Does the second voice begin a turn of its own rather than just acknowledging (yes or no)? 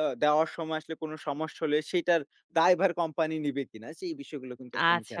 yes